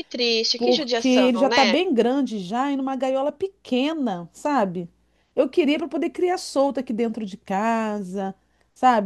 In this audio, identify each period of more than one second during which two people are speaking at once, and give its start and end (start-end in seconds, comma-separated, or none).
0.6-1.8